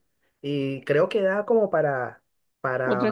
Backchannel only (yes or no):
yes